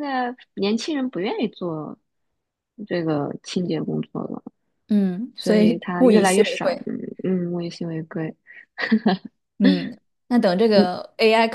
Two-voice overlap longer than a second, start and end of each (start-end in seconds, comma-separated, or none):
5.3-6.9